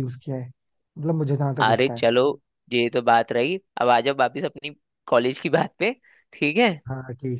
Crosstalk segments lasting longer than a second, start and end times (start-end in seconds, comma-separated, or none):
none